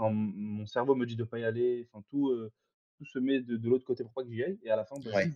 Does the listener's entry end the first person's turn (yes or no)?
no